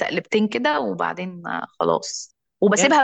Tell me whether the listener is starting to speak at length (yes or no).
no